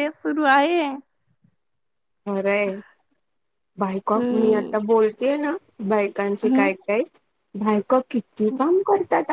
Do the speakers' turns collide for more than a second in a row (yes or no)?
no